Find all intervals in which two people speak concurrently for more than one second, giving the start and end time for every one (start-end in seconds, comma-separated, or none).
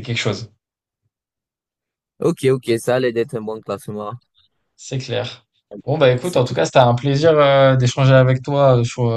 none